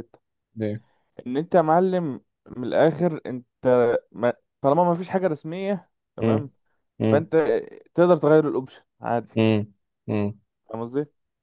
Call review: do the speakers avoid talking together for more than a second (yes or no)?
yes